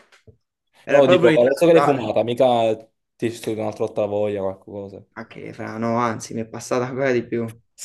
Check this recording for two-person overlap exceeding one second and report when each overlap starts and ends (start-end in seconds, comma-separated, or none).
0.9-2.1